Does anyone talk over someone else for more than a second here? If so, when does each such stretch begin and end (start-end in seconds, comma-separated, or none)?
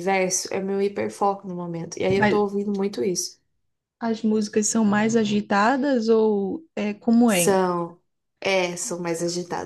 none